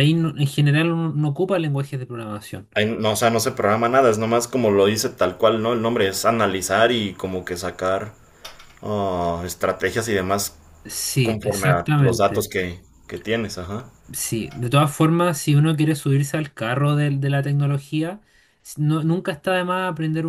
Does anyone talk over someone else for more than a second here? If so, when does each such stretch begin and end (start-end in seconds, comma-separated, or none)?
11.2-12.5